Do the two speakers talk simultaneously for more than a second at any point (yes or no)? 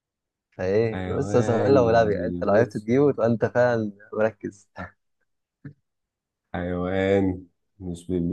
yes